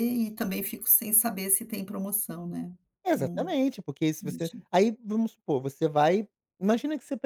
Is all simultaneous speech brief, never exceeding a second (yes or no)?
yes